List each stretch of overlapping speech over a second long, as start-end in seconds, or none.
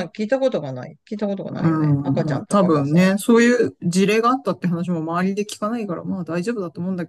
1.5-3.0